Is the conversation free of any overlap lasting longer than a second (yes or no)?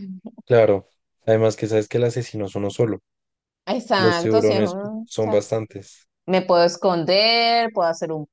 no